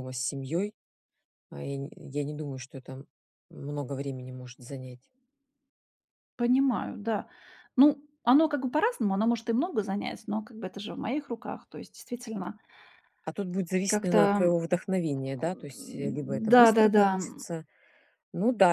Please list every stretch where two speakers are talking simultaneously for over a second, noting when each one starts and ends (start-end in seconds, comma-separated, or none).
15.4-17.2